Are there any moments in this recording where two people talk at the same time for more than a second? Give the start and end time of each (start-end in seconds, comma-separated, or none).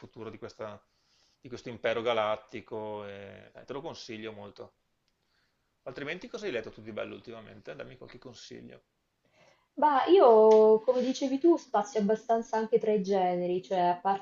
none